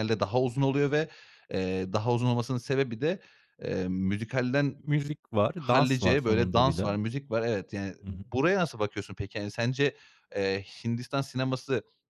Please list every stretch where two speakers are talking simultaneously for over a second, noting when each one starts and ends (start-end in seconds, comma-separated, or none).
5.5-7.0